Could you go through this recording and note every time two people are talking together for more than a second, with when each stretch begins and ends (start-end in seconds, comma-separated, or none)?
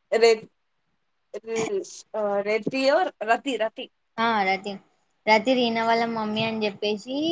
none